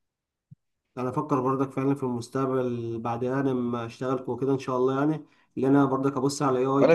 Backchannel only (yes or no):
no